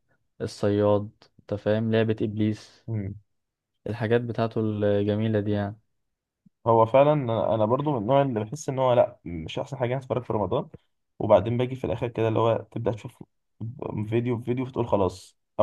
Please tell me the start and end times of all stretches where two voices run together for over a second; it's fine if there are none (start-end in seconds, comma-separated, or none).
none